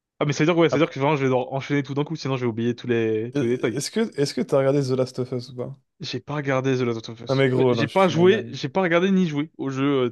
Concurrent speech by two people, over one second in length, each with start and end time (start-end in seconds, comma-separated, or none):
7.3-8.6